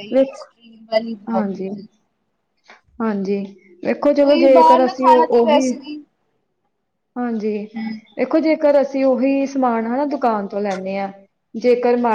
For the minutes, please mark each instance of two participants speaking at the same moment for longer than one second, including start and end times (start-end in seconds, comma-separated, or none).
4.2-5.8